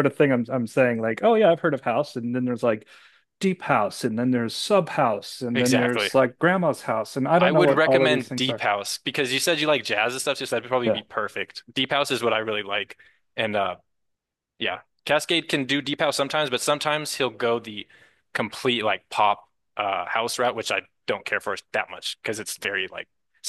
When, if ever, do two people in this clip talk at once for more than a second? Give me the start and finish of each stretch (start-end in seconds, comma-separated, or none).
7.4-8.6